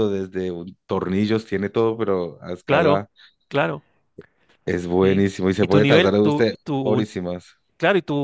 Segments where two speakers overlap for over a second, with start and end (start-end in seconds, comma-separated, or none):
5.0-7.0